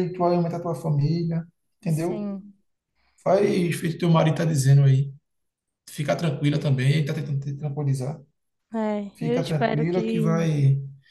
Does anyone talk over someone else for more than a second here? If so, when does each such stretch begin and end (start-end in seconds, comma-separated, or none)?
9.1-10.5